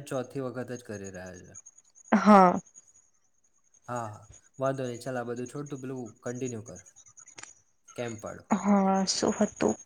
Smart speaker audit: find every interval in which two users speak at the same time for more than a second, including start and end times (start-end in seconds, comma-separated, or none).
none